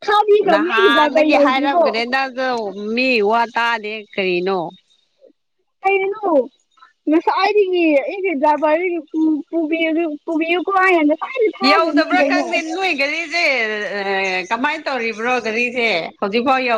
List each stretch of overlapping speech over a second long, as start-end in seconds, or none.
0.5-1.8